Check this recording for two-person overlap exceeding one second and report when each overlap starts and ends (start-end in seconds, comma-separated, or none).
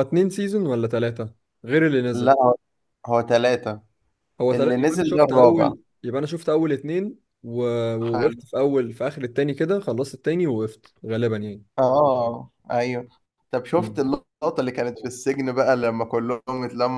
4.5-5.7